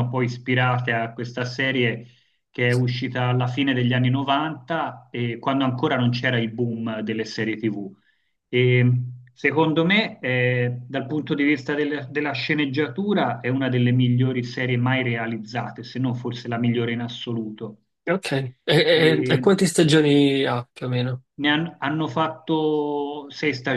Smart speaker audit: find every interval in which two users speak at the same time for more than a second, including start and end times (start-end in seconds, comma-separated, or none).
none